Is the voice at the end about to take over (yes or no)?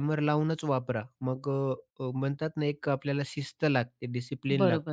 yes